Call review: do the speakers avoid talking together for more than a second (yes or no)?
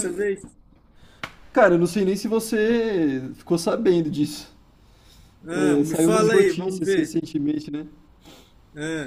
no